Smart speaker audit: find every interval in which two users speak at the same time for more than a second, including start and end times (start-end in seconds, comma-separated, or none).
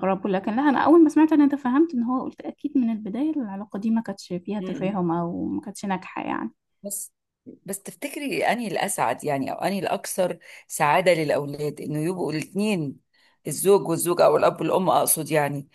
none